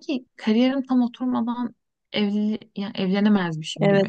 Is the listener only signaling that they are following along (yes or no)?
no